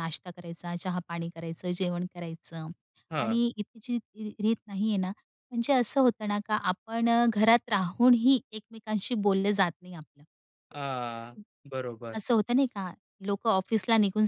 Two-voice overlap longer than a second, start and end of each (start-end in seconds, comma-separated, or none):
none